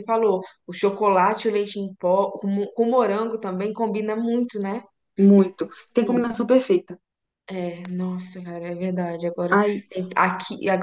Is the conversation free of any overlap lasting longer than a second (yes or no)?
yes